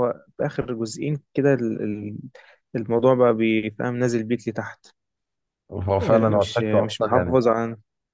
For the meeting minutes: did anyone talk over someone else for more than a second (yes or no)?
yes